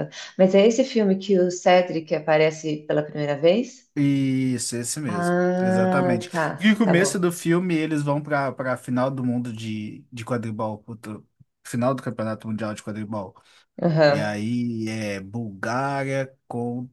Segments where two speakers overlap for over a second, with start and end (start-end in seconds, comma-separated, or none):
5.0-7.3